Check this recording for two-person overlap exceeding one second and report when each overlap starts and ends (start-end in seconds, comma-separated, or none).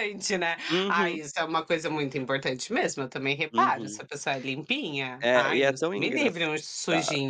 5.2-6.5